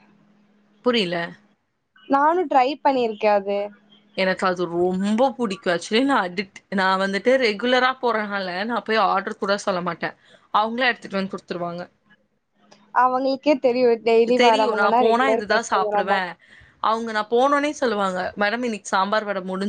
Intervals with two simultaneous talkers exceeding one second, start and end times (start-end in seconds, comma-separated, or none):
14.4-16.2